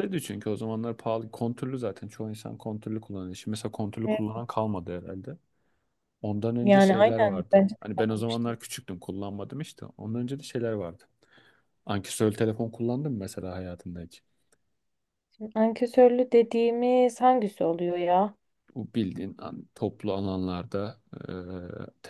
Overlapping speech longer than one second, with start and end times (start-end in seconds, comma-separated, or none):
6.6-8.6